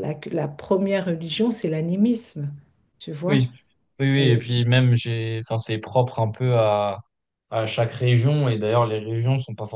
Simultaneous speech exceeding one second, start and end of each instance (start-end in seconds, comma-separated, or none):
none